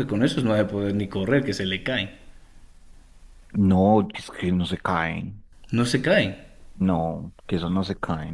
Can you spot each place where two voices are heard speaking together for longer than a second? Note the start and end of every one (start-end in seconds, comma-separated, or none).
none